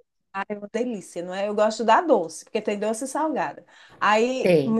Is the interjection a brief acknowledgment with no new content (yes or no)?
yes